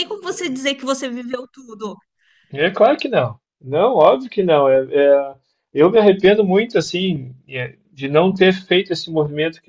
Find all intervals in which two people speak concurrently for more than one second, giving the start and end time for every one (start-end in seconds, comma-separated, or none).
none